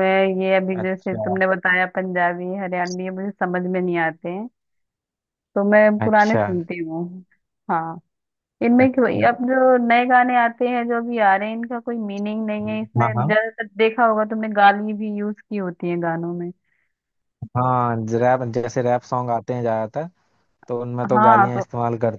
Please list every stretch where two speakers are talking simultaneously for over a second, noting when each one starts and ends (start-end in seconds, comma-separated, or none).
none